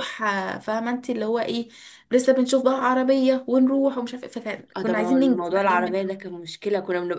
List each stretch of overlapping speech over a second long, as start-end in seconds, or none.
4.8-6.4